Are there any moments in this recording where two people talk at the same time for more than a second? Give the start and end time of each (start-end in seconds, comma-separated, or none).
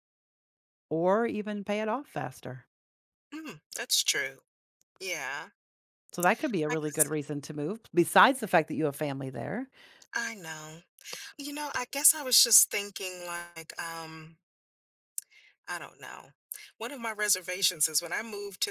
none